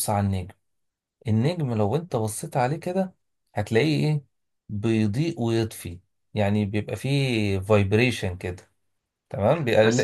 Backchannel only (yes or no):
no